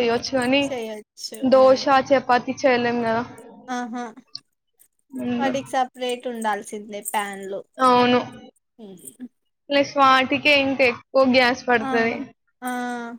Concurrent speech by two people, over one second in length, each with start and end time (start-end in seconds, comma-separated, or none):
none